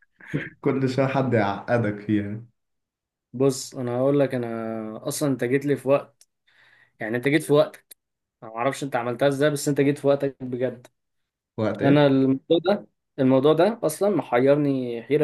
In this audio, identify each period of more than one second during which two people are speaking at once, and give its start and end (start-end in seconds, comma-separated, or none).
none